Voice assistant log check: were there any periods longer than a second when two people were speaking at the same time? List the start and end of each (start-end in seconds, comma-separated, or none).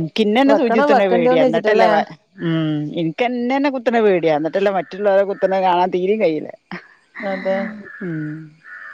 0.5-1.9